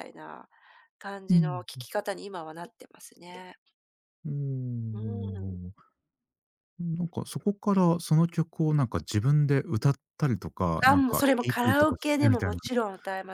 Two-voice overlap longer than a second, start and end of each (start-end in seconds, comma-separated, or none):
10.8-12.6